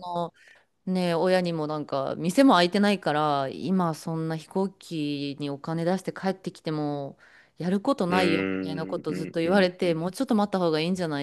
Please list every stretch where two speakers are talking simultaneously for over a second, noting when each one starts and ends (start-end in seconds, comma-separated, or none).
8.1-10.0